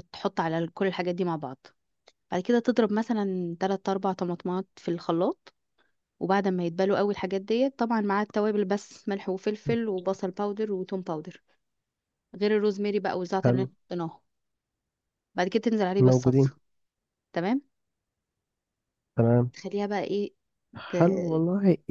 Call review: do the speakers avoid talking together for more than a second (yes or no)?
yes